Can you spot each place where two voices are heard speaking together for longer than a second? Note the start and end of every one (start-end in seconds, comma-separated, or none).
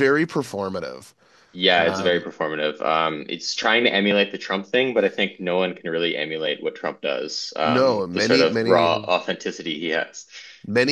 7.6-8.9